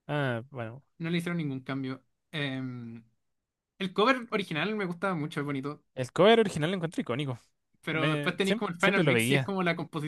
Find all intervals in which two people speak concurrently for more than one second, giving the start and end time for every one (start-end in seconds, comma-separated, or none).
7.9-9.5